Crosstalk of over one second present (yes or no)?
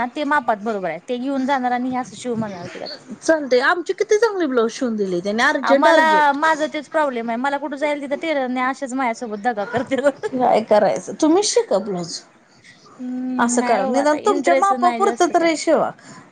yes